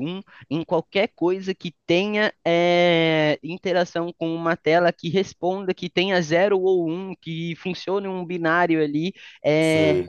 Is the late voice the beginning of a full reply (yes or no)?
no